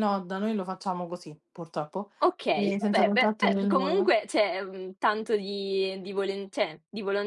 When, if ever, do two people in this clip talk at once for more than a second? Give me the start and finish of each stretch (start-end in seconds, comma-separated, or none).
2.5-4.1